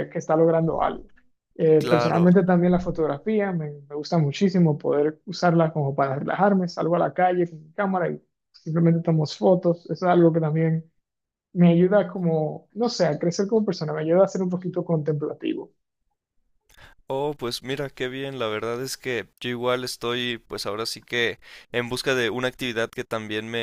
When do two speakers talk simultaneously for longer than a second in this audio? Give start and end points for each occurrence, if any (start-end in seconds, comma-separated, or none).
none